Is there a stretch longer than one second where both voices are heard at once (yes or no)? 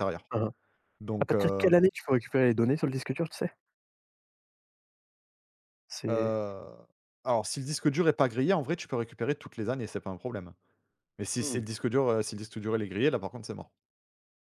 no